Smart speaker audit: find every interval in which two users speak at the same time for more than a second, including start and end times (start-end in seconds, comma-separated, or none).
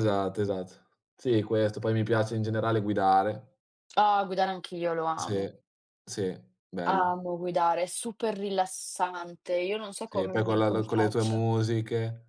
10.0-11.4